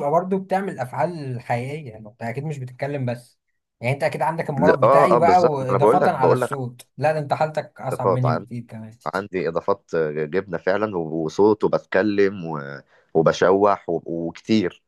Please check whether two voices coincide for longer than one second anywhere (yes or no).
yes